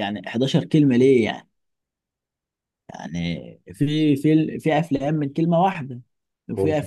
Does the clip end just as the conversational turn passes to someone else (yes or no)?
no